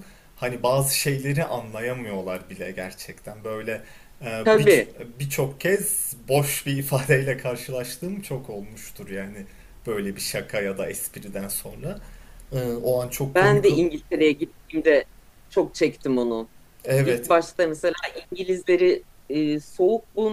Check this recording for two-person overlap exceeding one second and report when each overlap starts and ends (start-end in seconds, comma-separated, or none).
none